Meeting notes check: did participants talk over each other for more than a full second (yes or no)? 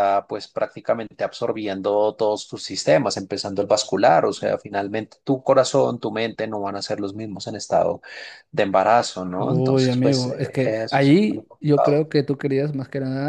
yes